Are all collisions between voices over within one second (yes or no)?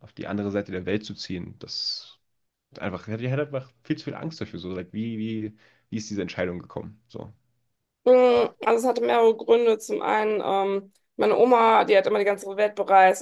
yes